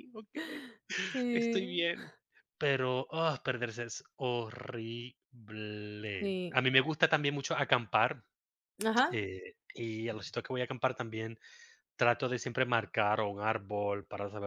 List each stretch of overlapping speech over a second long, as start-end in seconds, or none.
none